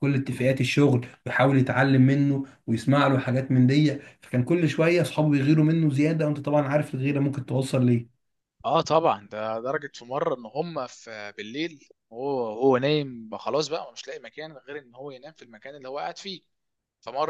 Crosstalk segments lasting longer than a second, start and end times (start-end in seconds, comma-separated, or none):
none